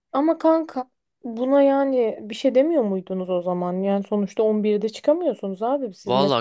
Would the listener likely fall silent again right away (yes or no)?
no